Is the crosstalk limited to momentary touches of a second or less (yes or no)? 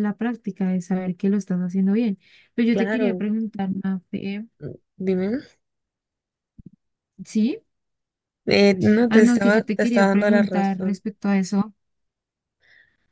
no